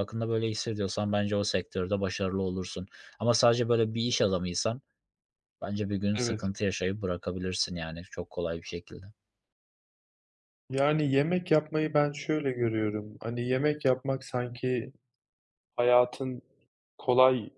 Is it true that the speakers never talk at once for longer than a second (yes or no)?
yes